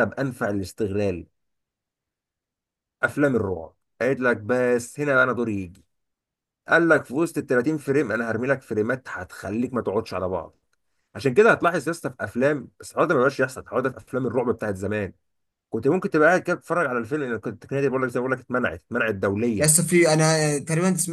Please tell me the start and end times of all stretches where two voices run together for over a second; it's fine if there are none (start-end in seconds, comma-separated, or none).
none